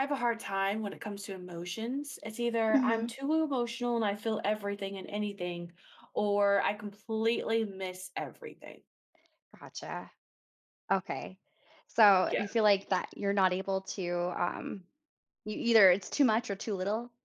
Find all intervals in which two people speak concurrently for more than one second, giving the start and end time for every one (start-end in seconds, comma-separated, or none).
none